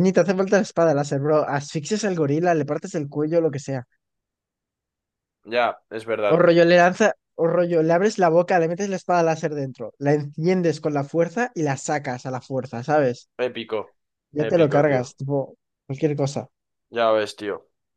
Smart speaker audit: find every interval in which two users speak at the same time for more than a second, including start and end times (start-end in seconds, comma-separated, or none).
none